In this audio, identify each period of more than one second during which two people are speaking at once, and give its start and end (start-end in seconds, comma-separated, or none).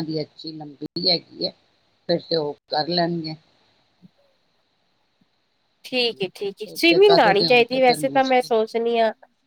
6.6-8.7